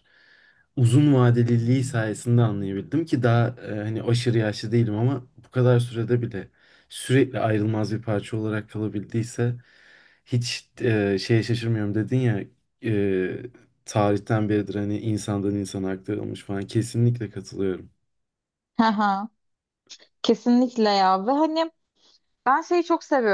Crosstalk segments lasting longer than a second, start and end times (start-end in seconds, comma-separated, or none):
none